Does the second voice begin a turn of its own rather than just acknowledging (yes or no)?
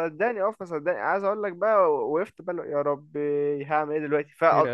no